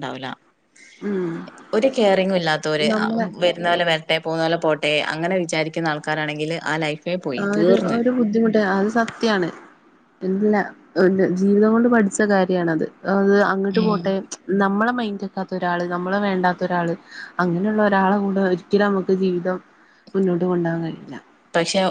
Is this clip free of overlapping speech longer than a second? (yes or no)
yes